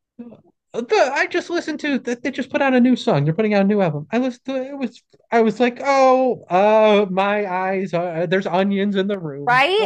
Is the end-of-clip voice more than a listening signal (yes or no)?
yes